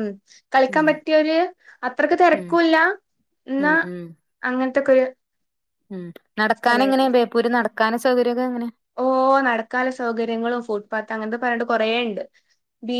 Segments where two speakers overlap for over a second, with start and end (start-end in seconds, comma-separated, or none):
none